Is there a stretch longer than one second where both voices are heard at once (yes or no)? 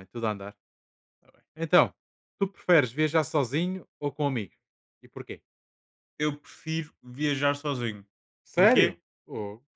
no